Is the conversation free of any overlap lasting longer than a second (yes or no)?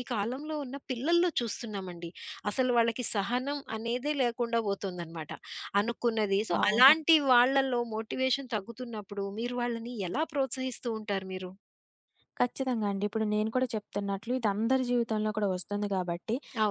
yes